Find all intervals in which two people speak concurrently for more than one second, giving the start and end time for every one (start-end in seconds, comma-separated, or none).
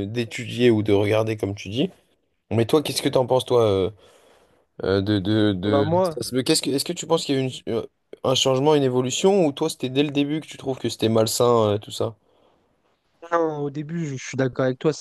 none